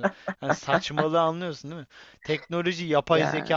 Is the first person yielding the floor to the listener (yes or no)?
no